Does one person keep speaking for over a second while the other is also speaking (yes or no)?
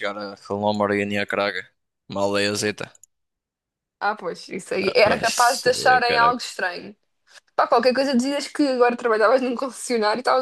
yes